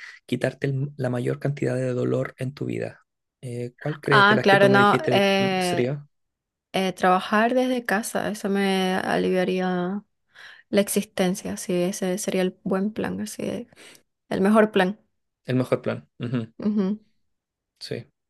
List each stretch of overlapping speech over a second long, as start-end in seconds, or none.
4.1-5.9